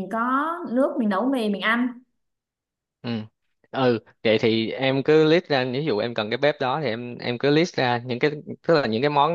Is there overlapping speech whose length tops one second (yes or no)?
no